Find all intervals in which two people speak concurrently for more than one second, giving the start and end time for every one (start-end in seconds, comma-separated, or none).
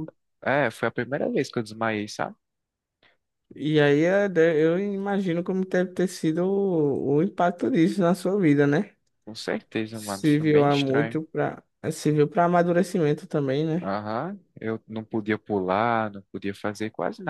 9.9-11.2